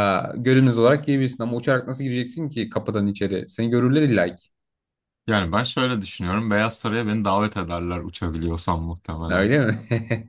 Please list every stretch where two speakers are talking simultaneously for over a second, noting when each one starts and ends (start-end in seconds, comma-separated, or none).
none